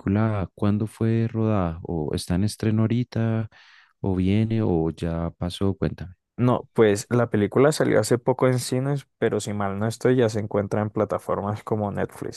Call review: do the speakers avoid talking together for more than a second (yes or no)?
yes